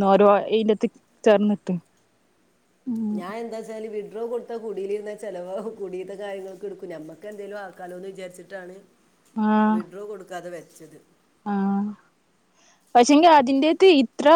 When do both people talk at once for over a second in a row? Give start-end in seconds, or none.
none